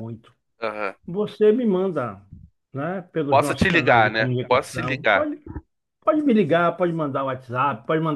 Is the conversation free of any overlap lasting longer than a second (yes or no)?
no